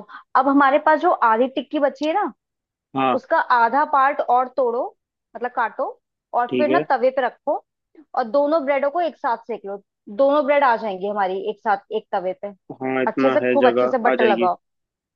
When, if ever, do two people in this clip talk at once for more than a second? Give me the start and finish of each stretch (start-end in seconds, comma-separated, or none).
13.1-14.5